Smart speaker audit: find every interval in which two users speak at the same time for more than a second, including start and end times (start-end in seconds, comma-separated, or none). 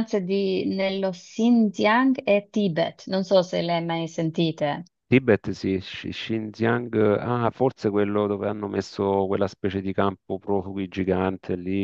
none